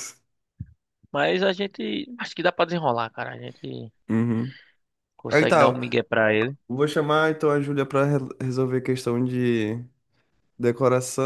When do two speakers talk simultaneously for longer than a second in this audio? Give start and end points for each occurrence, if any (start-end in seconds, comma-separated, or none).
none